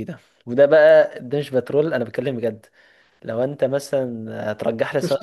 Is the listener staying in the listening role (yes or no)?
no